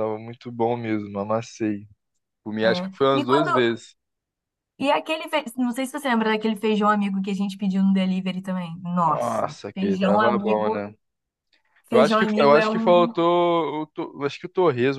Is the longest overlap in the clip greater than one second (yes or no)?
yes